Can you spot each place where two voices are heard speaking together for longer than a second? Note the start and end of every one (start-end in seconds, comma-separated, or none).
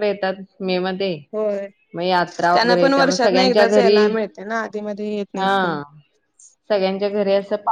none